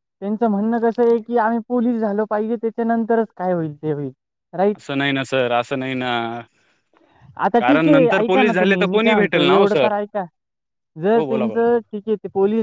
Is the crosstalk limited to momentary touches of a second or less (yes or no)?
no